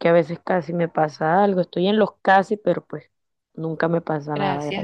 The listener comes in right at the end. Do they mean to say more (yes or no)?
yes